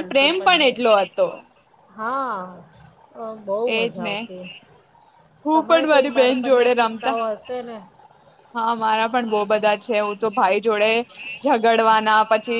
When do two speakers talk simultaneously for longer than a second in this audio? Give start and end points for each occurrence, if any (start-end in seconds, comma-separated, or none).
5.5-7.2